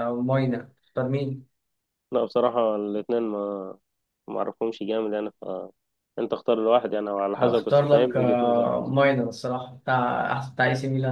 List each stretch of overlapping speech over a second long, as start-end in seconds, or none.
7.4-8.7